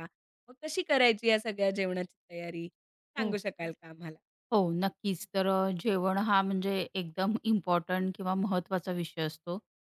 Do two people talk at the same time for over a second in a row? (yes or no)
no